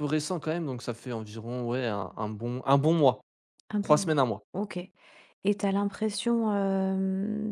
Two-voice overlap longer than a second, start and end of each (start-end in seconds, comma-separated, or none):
none